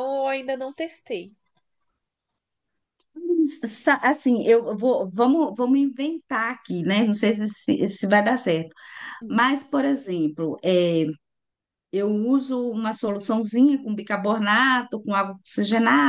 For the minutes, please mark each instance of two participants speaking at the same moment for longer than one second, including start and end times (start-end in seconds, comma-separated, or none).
none